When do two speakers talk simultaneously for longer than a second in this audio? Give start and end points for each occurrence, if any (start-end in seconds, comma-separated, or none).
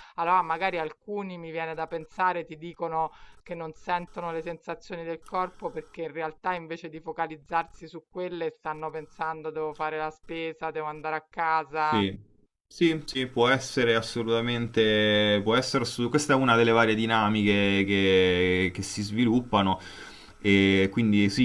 none